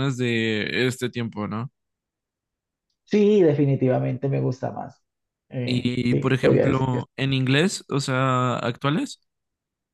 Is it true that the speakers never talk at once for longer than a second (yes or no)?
no